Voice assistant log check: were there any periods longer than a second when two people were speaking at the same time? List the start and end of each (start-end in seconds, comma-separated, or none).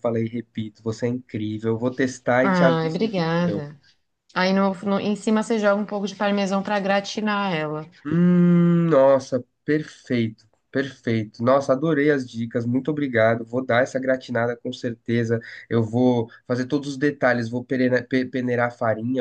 2.4-3.6